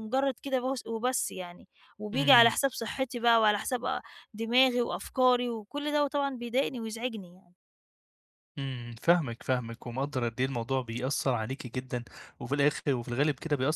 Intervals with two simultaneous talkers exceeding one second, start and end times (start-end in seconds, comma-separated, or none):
none